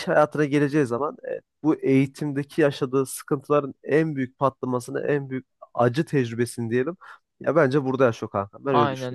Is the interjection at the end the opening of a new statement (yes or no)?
yes